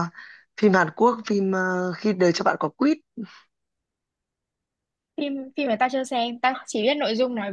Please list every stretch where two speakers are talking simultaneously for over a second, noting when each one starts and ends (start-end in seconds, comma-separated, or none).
none